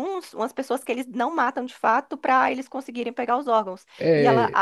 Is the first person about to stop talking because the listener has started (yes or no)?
no